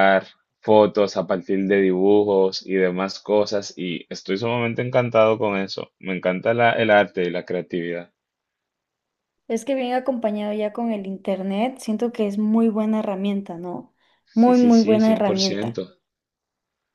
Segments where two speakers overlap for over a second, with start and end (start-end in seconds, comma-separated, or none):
14.4-15.8